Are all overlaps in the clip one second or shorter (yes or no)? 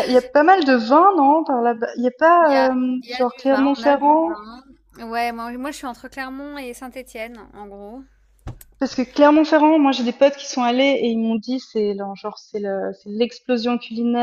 no